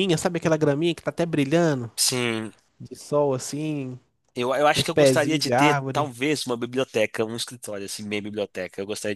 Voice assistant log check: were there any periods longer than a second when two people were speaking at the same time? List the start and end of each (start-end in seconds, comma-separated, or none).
4.7-6.1